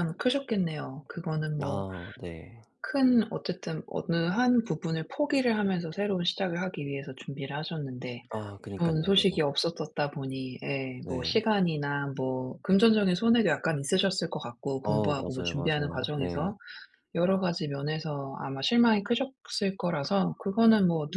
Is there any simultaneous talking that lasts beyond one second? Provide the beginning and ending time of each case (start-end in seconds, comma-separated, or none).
14.8-16.5